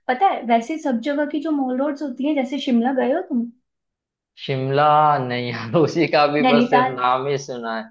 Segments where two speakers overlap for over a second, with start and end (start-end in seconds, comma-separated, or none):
none